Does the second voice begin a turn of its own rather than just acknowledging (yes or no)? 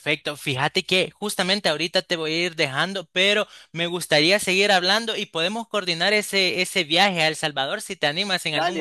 yes